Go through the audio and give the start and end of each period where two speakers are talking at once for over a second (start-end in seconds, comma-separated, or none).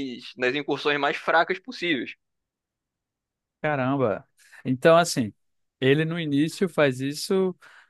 none